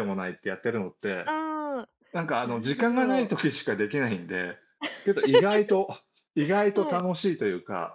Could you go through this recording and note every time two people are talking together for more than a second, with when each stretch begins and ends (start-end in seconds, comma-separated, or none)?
2.1-3.4